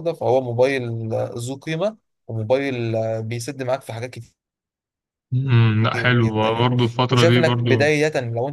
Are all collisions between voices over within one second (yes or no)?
no